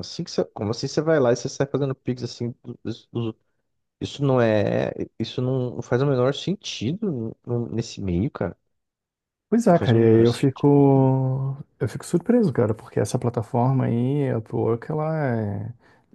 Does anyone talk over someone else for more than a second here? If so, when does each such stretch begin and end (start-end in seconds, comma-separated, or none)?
9.7-11.1